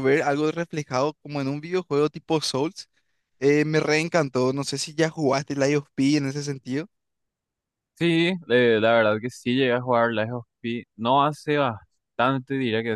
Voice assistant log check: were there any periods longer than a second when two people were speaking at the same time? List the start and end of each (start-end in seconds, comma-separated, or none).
none